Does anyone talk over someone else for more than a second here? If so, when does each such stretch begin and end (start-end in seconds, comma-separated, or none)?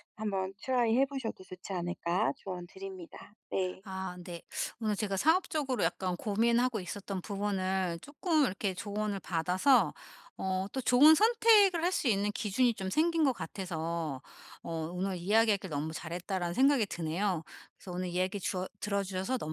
none